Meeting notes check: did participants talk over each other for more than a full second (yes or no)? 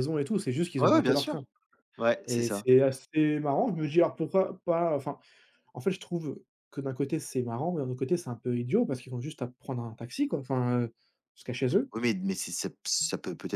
no